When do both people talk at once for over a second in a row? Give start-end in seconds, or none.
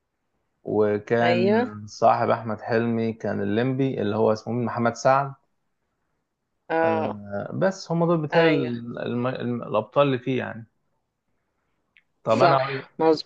none